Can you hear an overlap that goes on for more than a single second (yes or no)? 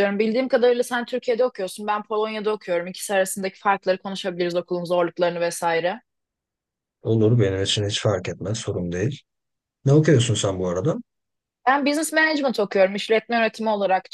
no